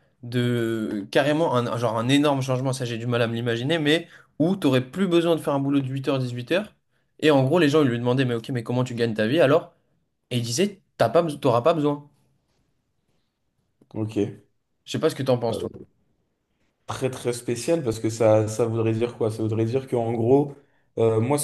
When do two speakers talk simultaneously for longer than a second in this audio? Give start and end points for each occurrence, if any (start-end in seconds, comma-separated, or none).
none